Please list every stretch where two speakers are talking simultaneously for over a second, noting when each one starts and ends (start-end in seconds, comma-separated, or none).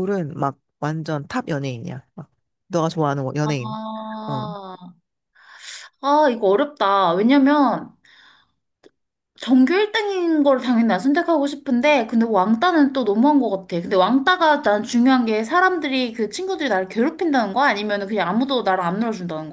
none